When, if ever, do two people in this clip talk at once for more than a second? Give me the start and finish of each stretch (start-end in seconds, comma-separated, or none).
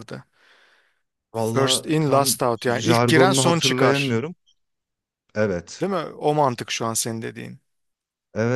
1.5-4.2